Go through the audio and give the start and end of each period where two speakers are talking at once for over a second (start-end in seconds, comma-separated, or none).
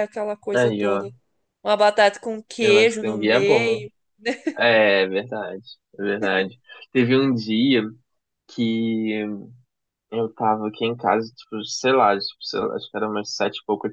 2.6-3.8